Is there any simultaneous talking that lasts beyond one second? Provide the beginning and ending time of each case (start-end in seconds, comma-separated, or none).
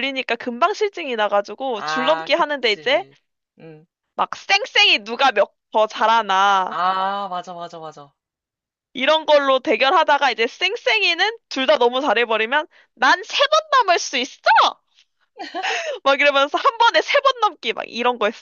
1.8-3.0